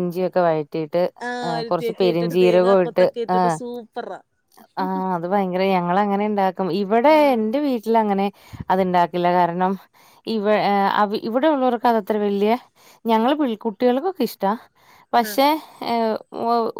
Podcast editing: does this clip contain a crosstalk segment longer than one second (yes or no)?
yes